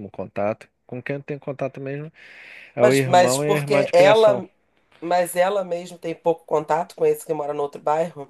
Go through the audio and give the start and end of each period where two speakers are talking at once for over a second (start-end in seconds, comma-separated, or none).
2.8-4.4